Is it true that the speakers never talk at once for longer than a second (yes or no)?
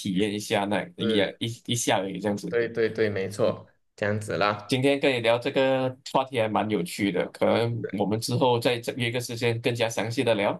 yes